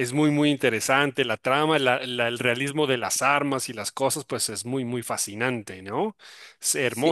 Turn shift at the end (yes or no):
yes